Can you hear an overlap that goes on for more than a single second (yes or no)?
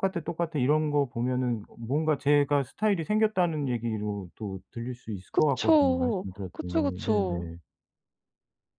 yes